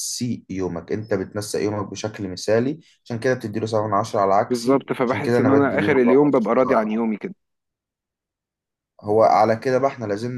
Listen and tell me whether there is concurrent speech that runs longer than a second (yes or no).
yes